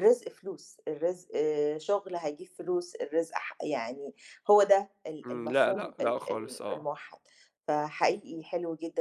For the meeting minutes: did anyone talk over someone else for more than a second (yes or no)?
yes